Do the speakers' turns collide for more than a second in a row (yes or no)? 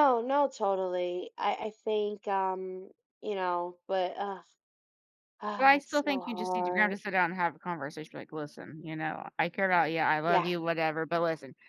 yes